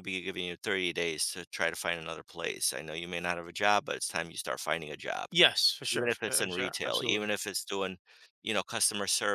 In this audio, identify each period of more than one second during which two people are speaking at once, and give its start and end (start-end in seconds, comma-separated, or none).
5.9-7.3